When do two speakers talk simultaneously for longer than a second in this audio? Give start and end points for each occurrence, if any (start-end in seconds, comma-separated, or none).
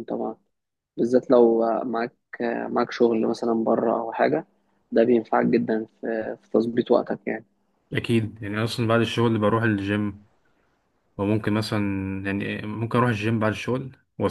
none